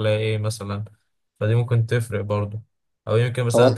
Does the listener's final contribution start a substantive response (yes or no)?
no